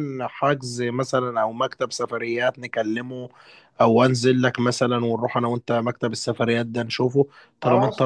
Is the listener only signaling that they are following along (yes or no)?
no